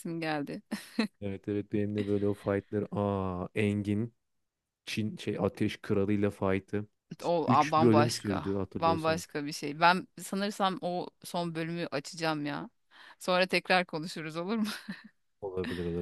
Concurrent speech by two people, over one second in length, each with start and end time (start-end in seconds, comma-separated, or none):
7.5-9.2